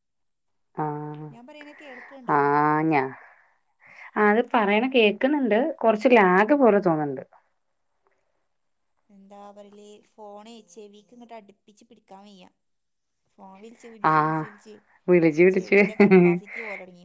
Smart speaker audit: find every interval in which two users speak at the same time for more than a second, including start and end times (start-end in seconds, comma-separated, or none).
none